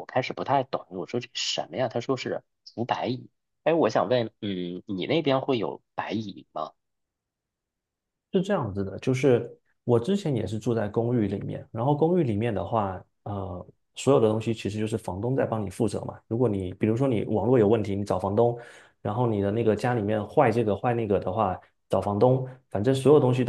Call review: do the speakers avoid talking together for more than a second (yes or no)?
yes